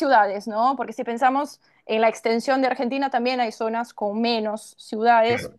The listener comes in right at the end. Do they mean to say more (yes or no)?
no